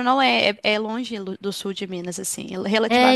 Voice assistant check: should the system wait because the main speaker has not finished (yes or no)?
no